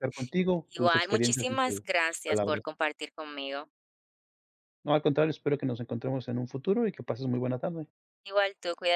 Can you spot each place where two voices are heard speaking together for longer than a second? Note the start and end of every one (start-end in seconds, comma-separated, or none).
0.7-2.6